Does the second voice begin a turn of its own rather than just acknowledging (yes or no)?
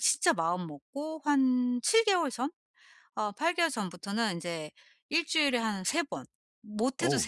no